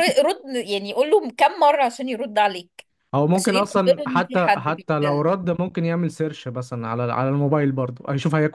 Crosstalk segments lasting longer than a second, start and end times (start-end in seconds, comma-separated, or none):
3.3-5.3